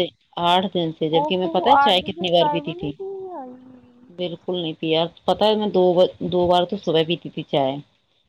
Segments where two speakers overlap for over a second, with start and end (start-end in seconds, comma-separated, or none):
1.2-2.9